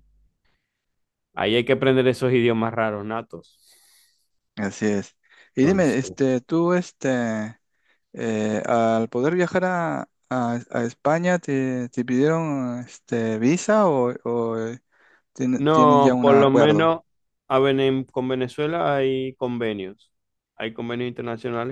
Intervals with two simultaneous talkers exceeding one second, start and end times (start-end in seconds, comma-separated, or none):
15.5-16.9